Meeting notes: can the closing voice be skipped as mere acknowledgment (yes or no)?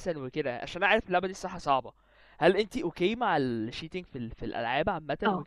no